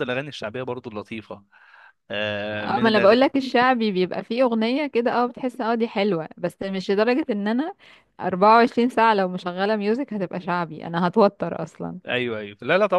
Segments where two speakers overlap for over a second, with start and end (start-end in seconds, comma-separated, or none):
none